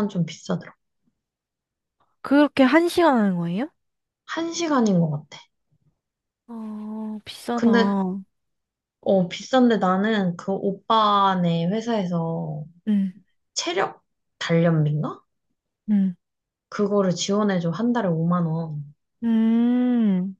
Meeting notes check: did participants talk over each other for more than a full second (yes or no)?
no